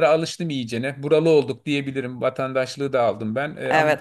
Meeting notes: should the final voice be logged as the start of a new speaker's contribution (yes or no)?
no